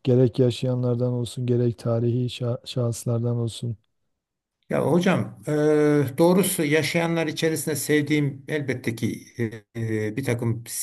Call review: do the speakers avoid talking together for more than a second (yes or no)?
yes